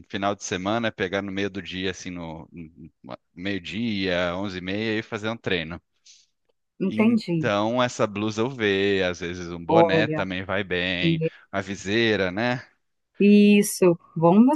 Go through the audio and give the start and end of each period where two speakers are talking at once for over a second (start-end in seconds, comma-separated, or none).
none